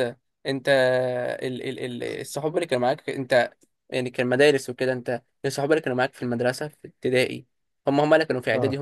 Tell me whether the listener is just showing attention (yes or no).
yes